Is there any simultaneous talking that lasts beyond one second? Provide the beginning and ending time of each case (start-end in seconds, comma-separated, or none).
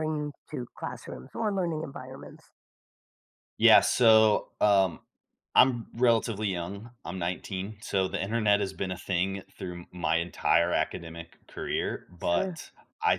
none